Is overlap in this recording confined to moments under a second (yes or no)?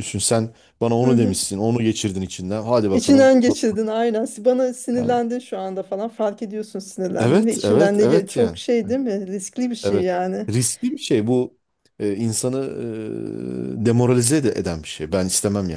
no